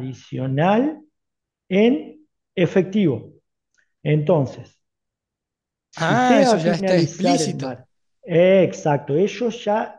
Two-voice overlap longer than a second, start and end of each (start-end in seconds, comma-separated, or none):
6.0-7.8